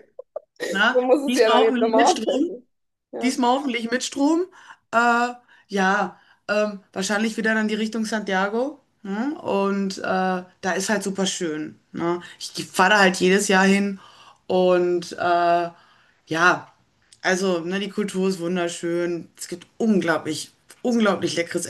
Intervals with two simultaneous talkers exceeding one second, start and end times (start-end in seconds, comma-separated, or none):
0.9-2.5